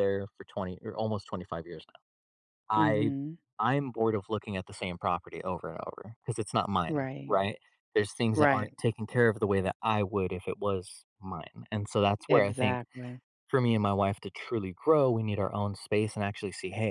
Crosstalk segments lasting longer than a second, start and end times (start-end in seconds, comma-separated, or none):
none